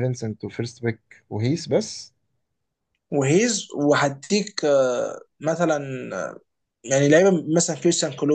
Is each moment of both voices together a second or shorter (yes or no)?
yes